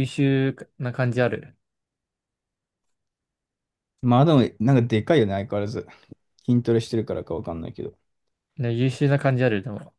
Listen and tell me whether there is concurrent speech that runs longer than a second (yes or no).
no